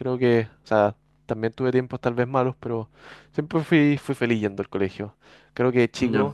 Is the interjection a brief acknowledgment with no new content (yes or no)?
yes